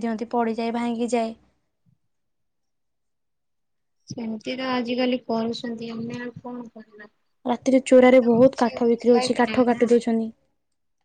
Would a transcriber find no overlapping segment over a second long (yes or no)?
no